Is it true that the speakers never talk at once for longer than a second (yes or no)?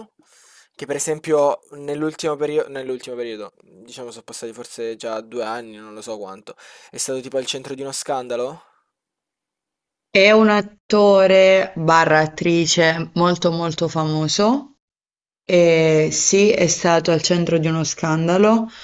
yes